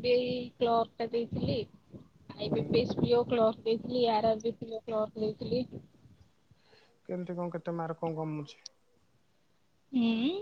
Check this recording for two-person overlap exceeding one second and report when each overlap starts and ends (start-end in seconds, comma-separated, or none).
none